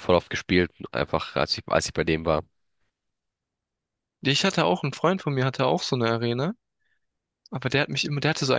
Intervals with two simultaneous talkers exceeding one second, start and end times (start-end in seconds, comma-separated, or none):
none